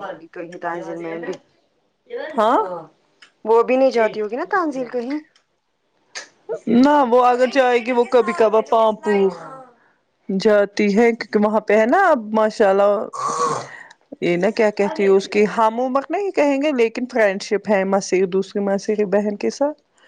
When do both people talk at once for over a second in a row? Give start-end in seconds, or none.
none